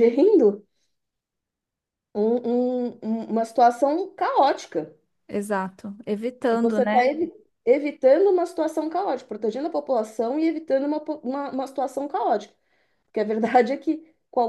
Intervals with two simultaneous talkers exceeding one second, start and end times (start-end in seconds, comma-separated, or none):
none